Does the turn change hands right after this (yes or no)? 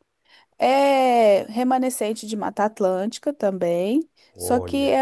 no